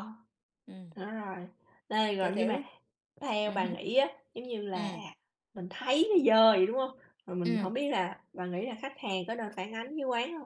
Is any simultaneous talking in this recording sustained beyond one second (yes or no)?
no